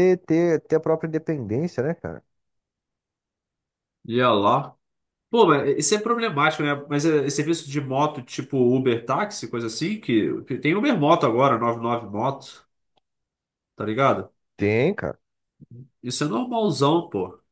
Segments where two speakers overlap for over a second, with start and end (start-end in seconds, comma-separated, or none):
none